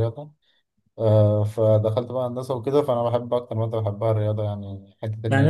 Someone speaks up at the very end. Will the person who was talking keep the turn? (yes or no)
no